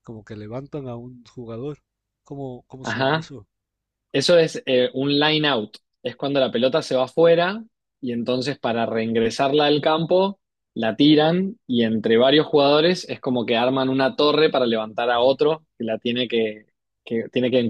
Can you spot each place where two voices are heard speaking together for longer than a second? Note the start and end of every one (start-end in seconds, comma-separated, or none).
none